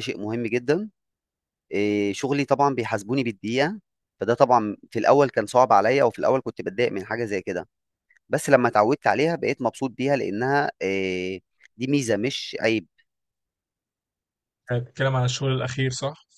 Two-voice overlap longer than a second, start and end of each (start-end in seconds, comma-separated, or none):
none